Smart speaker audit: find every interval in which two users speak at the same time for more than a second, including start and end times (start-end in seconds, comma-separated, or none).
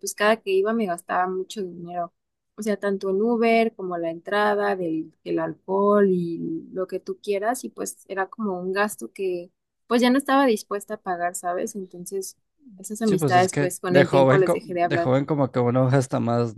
13.0-15.1